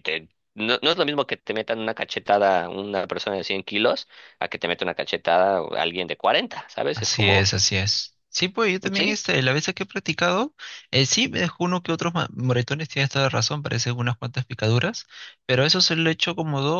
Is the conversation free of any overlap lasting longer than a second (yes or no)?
yes